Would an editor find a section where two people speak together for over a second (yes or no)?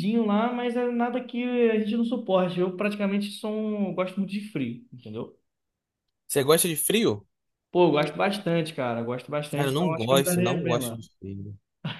yes